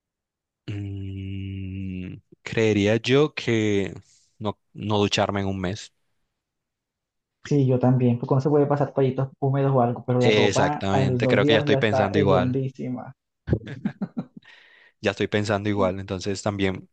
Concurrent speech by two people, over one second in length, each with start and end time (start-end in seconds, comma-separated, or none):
10.2-12.6